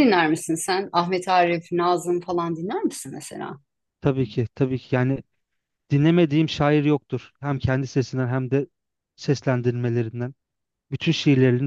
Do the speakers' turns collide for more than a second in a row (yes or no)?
no